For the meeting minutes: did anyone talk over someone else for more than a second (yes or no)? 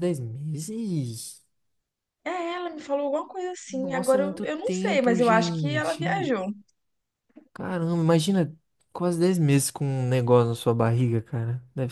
yes